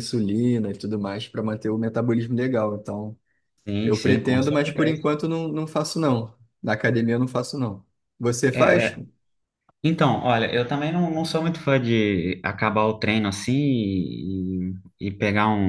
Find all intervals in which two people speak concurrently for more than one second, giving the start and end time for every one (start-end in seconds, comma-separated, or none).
3.8-5.0